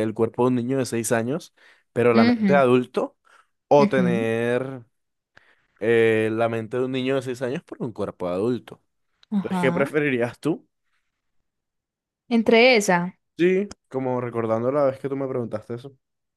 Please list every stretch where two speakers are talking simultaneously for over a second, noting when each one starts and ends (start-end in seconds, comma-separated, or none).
none